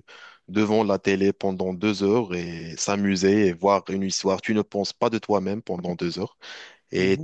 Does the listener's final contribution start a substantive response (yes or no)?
no